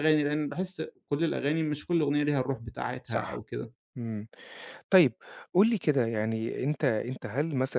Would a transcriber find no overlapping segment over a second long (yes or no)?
yes